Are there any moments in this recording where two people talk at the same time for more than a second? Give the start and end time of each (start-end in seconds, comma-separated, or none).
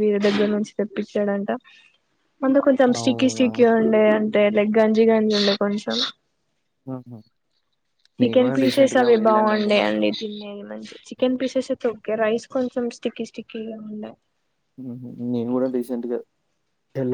8.2-10.0